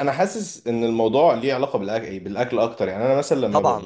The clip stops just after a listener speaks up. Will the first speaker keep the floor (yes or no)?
no